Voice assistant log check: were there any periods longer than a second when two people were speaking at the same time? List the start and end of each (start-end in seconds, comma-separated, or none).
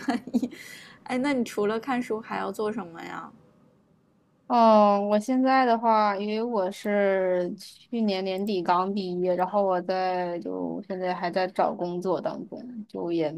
none